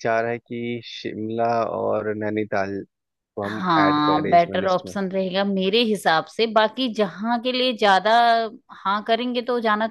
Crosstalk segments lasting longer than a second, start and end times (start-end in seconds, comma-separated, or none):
3.4-4.9